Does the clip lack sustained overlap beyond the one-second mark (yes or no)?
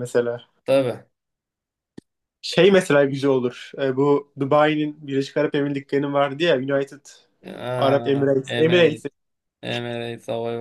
no